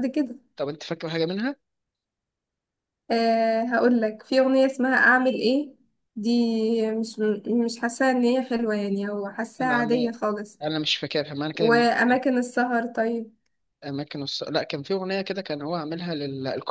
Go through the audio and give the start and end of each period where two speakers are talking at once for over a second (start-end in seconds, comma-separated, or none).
none